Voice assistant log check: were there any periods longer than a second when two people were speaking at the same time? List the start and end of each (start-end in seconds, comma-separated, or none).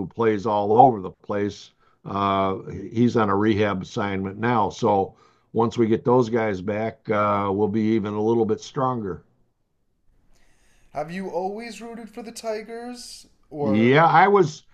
none